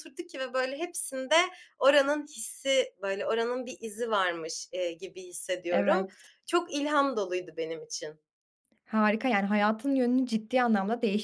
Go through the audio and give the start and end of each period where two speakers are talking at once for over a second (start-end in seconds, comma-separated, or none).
none